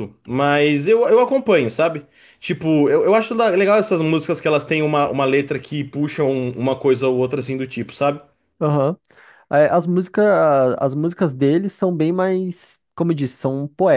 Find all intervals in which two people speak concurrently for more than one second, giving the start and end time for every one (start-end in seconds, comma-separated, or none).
none